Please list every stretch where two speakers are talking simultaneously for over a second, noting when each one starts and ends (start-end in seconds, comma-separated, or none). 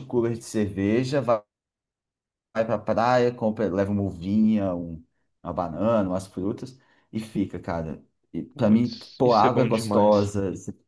8.5-10.3